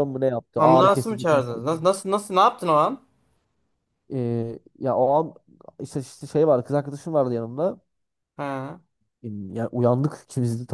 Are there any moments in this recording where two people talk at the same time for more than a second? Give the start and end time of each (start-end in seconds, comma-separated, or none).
0.6-1.8